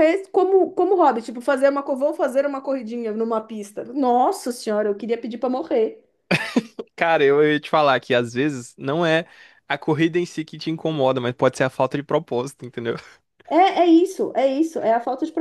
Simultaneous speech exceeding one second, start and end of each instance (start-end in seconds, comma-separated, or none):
none